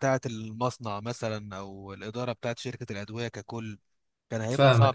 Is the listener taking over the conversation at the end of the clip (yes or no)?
yes